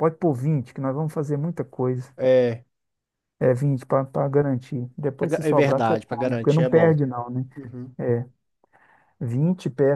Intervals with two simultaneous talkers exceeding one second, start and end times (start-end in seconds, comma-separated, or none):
5.2-6.9